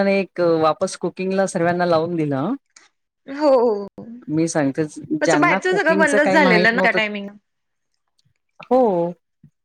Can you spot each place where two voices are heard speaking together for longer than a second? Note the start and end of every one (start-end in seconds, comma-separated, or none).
5.2-7.0